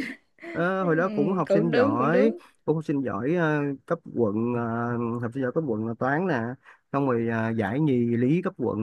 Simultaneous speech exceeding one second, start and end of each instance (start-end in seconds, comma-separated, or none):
0.8-2.4